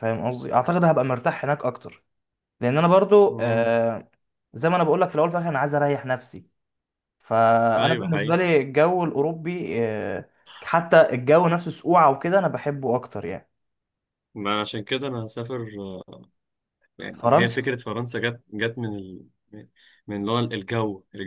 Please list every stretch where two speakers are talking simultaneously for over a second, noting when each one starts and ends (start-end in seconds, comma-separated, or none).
none